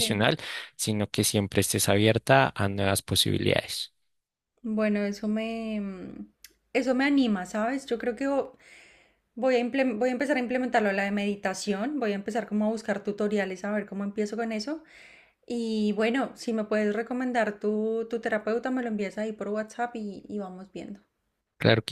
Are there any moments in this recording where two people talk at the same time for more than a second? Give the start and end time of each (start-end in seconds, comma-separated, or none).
none